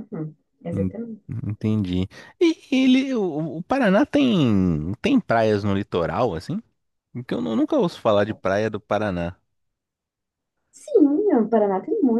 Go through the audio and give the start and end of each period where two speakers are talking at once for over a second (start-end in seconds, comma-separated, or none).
none